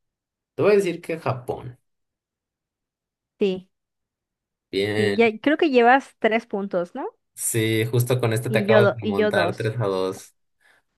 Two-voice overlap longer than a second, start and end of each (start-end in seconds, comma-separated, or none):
8.5-9.8